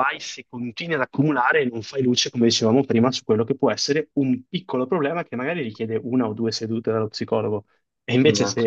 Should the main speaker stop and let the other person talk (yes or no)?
no